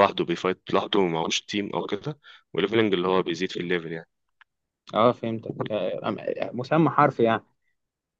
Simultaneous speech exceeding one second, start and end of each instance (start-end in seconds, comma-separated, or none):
none